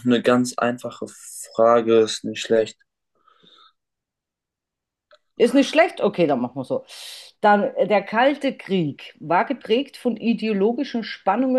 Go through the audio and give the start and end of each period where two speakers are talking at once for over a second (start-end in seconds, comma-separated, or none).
none